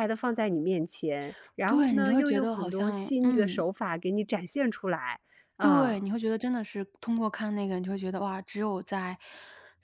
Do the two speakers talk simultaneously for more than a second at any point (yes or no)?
yes